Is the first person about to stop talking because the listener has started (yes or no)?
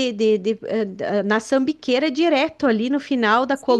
yes